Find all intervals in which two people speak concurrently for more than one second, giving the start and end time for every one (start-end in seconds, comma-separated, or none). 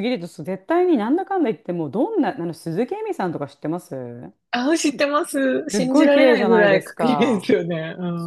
5.7-7.5